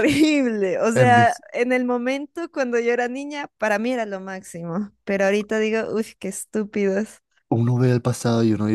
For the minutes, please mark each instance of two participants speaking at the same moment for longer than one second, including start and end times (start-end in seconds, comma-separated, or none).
none